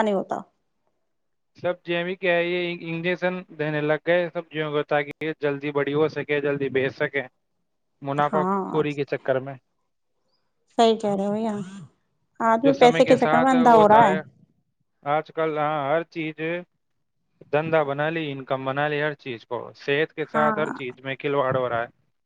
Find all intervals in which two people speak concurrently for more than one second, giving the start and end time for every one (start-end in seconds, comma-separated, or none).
12.6-14.1